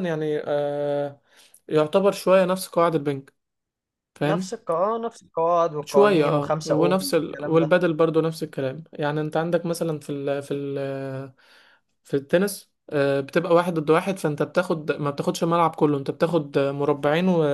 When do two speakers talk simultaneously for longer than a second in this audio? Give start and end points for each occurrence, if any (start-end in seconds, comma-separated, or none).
5.8-7.8